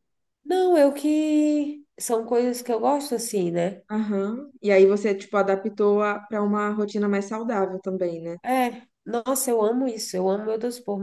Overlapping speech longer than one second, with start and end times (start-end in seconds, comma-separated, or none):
none